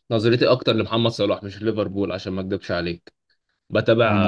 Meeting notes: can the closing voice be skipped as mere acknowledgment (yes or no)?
yes